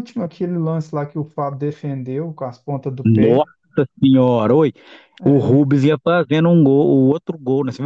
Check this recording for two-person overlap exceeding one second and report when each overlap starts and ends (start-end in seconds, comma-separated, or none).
none